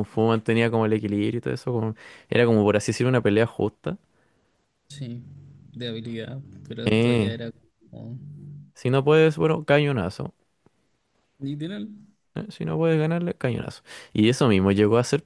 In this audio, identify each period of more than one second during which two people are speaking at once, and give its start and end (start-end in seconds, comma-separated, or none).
none